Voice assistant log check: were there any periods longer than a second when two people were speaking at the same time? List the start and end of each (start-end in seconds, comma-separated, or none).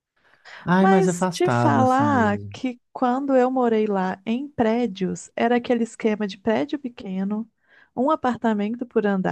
0.8-2.6